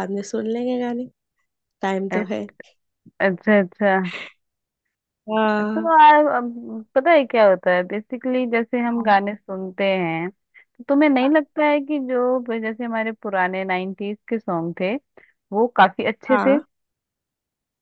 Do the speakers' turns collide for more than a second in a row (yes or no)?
no